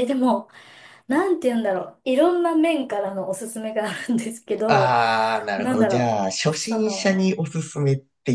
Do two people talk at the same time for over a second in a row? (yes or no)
yes